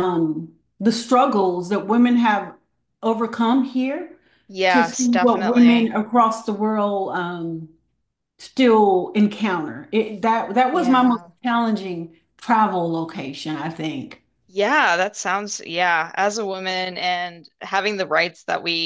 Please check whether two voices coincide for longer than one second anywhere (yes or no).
yes